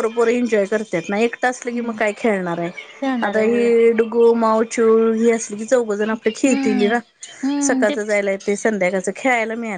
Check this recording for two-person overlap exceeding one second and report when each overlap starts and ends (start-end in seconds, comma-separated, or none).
none